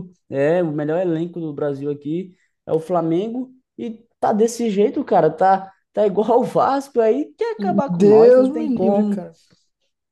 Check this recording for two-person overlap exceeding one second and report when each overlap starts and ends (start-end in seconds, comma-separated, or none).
7.9-9.3